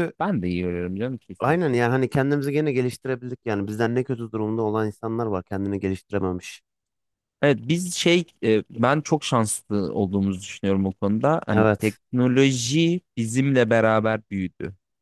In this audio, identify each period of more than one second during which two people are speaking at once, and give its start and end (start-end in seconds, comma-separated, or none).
none